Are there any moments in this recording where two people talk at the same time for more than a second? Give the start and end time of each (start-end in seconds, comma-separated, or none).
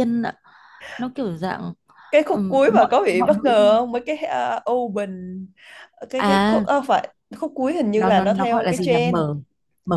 2.3-3.8, 7.9-9.2